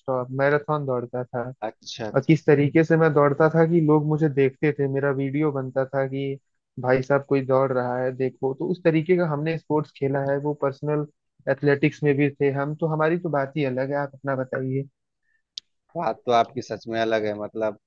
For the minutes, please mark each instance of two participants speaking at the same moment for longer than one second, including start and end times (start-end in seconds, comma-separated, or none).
none